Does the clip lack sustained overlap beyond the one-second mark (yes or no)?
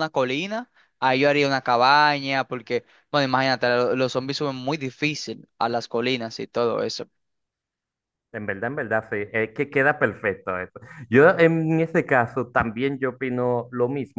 yes